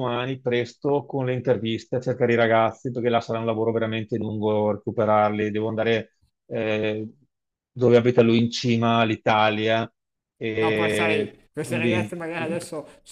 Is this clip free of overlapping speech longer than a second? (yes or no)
no